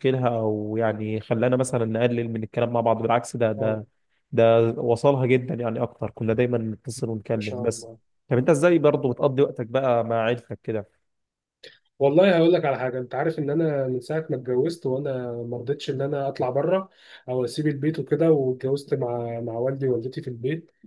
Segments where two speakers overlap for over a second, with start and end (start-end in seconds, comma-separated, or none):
none